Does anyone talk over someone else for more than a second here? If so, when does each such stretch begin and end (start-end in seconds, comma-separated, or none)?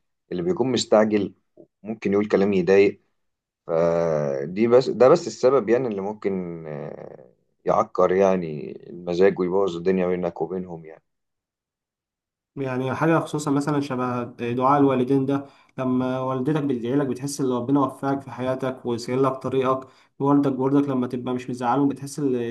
none